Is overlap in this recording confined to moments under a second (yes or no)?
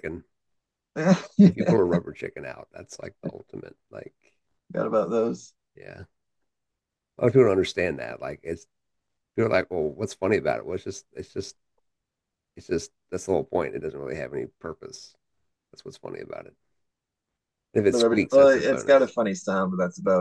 no